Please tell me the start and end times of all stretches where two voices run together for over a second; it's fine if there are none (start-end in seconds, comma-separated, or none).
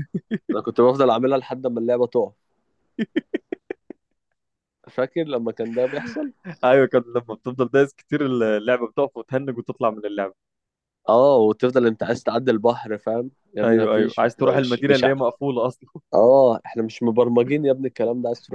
13.6-15.2